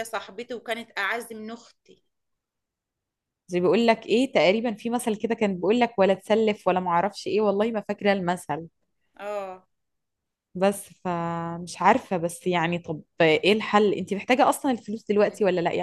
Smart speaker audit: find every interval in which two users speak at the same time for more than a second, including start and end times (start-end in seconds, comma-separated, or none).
none